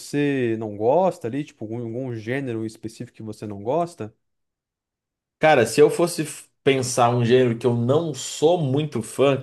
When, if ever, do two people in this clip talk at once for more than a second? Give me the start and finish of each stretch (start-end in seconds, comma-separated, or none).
none